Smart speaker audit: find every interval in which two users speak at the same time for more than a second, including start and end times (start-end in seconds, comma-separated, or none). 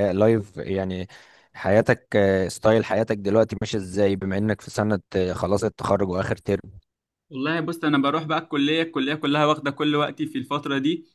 none